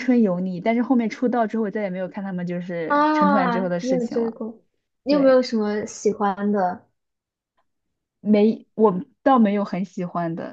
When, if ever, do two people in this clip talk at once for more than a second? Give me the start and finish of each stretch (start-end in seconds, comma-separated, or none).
2.9-4.4